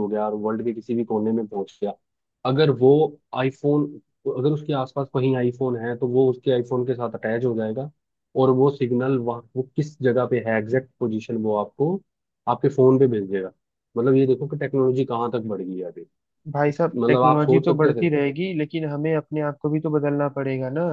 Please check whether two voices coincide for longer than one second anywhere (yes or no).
yes